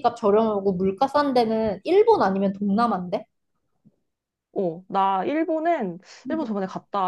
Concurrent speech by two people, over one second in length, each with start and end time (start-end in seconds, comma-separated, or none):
none